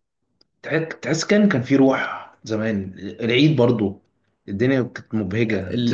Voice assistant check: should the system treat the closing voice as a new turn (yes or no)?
yes